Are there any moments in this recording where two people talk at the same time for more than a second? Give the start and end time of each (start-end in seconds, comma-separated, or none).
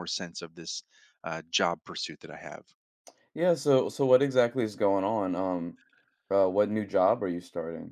none